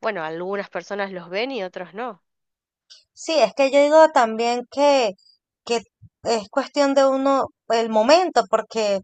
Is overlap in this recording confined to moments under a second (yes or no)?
yes